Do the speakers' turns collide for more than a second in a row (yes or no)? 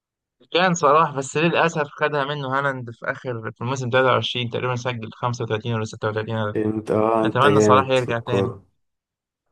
yes